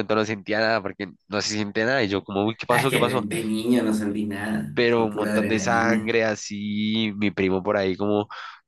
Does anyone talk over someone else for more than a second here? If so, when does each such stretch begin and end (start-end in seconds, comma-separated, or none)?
4.7-6.1